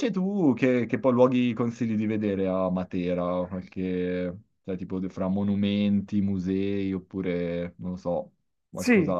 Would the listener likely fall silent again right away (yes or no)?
no